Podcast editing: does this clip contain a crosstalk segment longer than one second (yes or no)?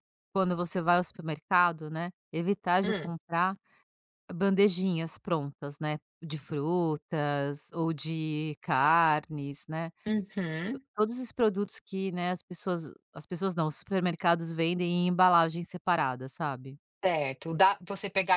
no